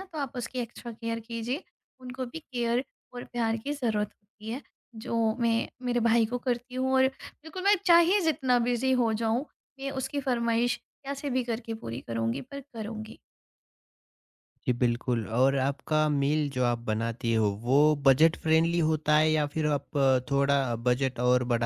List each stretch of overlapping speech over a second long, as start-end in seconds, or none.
none